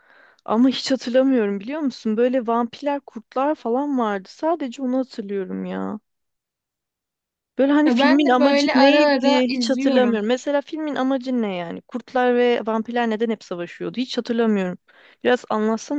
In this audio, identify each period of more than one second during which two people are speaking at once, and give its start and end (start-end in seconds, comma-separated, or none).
7.8-10.2